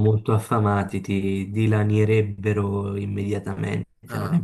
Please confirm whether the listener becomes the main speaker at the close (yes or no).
yes